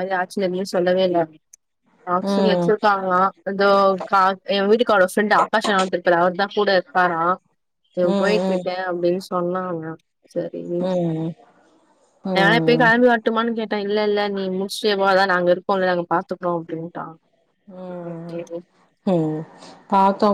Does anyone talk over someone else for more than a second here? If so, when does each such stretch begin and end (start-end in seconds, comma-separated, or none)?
none